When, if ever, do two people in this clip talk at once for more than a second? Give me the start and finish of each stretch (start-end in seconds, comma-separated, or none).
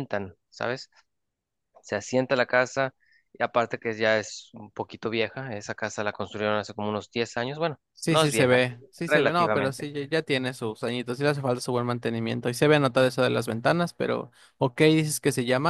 7.9-9.9